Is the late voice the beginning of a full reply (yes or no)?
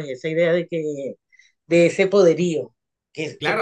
yes